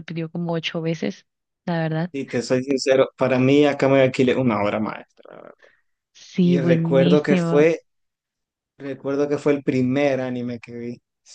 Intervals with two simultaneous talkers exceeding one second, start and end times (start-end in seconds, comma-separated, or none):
6.4-7.7